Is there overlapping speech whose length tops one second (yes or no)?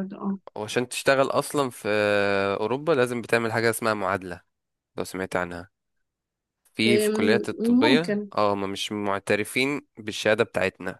yes